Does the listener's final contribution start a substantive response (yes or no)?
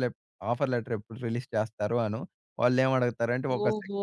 no